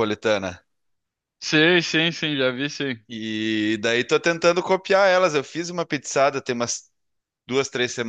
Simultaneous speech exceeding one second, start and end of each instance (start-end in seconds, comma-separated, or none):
none